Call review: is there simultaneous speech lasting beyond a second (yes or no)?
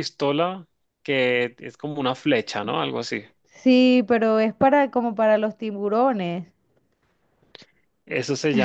no